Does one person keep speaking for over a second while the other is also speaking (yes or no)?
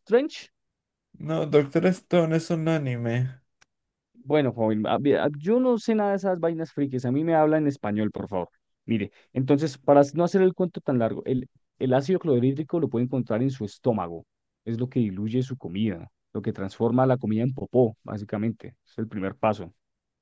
no